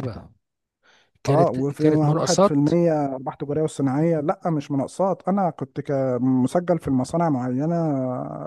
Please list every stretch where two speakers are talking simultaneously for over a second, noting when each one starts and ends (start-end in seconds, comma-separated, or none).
1.2-2.5